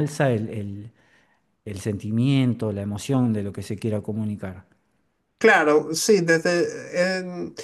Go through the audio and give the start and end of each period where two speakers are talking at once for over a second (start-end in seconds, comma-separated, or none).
none